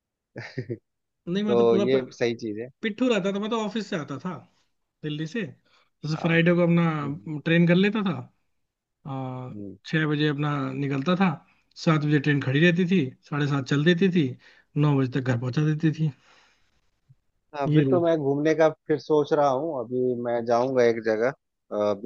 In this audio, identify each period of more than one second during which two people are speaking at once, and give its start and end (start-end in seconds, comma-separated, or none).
none